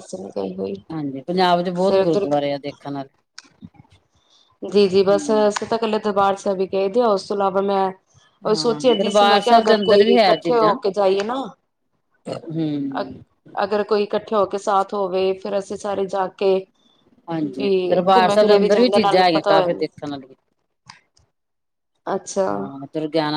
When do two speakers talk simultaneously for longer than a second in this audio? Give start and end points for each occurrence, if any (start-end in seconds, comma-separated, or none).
8.5-10.7, 17.4-19.9